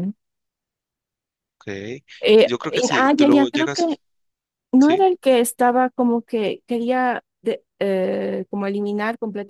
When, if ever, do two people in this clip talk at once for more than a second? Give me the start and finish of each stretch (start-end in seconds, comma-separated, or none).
2.4-4.0